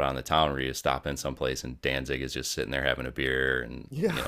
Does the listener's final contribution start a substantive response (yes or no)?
no